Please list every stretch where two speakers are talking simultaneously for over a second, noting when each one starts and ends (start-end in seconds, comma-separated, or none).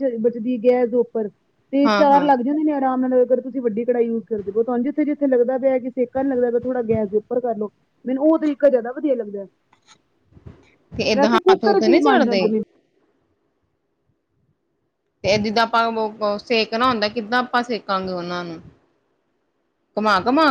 11.1-12.4